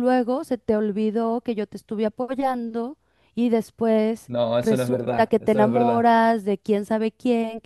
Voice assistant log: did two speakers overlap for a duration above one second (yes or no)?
yes